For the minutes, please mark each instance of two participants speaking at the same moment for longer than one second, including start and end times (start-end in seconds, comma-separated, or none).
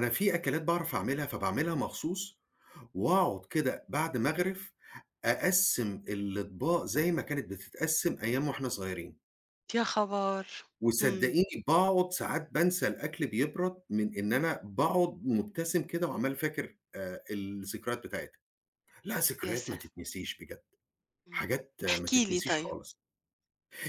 21.3-22.7